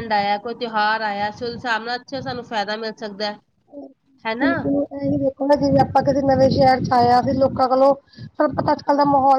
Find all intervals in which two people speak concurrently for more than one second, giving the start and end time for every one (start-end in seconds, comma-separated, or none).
none